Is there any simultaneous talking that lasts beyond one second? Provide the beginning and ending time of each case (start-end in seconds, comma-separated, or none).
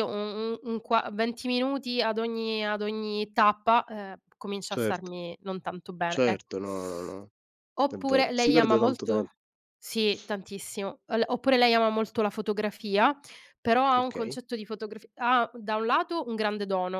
7.9-9.3